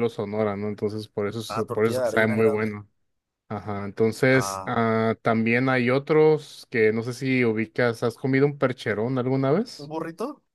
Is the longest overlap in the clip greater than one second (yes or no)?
yes